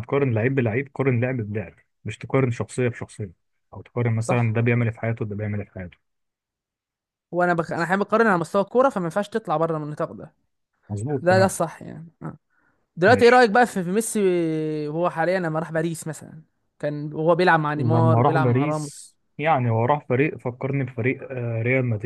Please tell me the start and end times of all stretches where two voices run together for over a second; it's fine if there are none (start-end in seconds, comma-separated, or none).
17.8-19.1